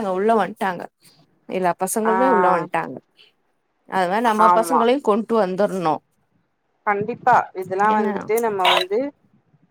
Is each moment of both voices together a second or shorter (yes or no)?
yes